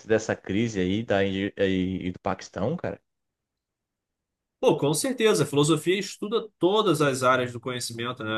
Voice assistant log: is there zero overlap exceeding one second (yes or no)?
yes